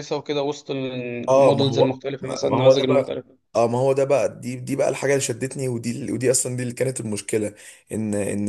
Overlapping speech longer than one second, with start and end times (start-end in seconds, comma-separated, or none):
1.3-3.1